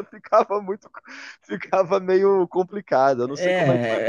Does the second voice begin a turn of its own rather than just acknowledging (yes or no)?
yes